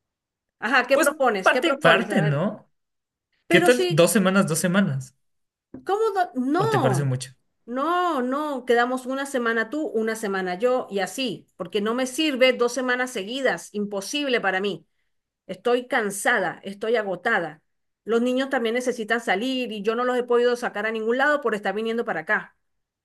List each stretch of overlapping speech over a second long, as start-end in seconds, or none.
0.9-2.4